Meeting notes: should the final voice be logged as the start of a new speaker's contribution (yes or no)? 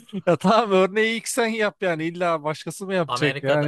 yes